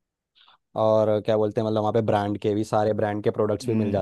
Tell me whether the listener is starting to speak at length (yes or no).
yes